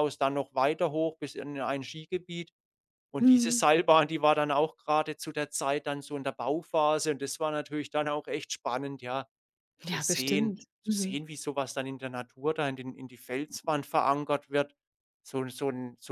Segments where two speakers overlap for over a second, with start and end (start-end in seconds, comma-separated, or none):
9.8-11.2